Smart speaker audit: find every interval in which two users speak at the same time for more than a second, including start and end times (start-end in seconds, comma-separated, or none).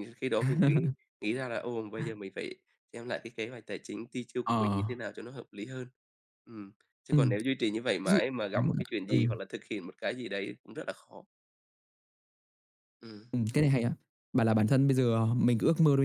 none